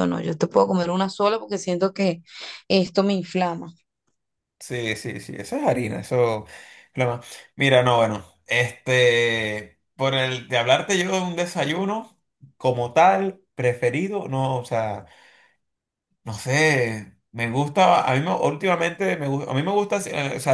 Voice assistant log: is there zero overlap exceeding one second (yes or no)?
yes